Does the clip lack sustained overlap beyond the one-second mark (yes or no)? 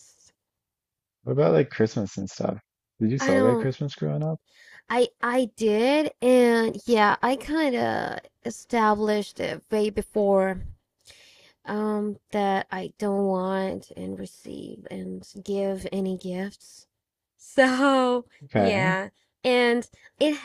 yes